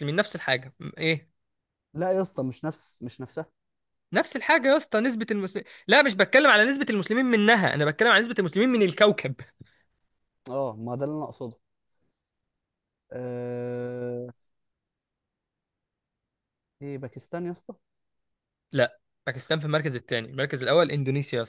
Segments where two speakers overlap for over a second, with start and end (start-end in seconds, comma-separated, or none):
none